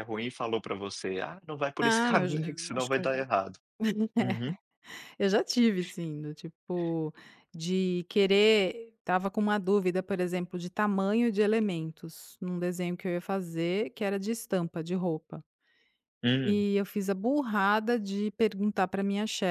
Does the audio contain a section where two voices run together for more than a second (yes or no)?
yes